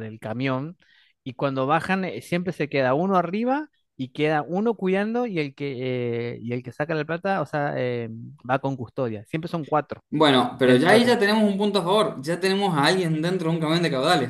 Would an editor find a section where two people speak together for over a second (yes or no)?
no